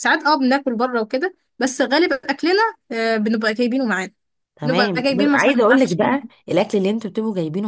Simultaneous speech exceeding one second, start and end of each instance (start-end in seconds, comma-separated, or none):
4.6-6.2